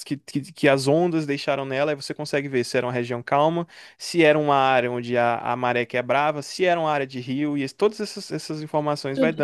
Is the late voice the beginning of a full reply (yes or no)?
yes